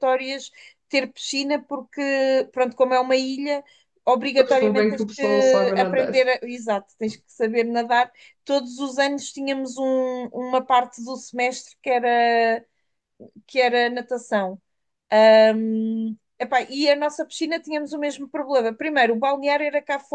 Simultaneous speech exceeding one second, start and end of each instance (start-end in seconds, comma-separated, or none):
4.4-6.1